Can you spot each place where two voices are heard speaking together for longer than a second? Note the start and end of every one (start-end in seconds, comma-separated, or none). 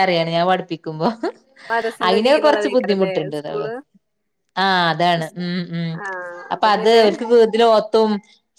2.1-3.7